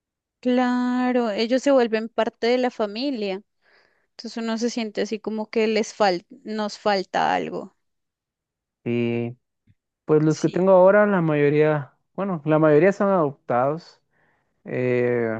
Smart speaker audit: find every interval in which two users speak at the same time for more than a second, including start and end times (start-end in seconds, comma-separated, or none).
none